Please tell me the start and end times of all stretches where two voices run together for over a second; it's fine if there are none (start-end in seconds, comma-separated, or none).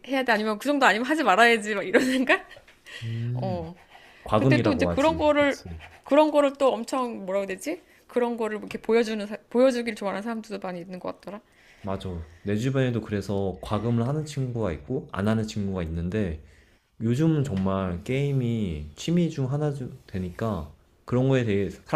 4.4-5.6